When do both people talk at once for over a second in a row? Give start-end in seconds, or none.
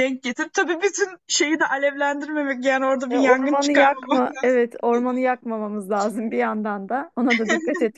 3.1-4.6